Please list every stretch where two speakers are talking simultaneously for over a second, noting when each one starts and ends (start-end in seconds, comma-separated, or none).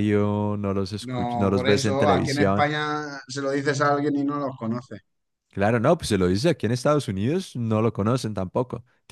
1.0-2.7